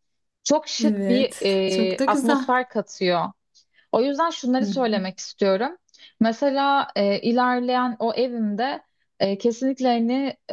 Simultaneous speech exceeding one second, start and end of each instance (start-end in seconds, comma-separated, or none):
0.8-2.5